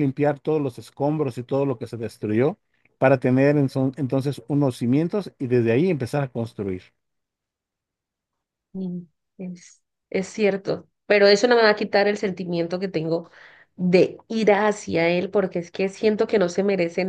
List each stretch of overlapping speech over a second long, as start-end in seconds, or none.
none